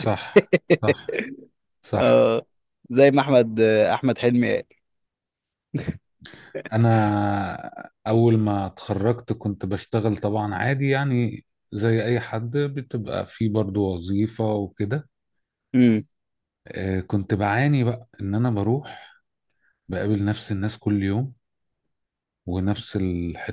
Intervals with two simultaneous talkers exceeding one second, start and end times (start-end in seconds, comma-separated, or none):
none